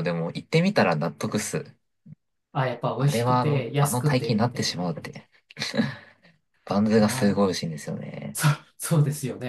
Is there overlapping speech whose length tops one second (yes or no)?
yes